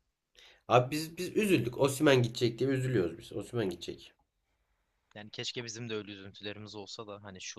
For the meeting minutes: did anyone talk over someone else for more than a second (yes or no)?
no